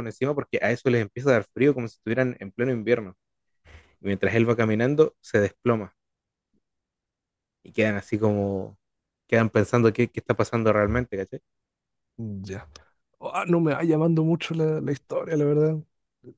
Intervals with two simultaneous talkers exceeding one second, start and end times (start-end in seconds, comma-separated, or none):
none